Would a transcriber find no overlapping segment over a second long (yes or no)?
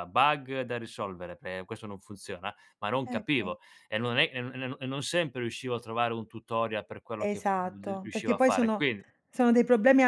no